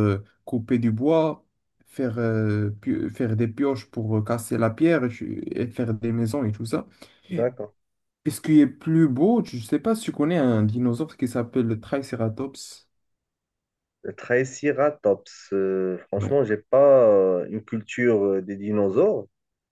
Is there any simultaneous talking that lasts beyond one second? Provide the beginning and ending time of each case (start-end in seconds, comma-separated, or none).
none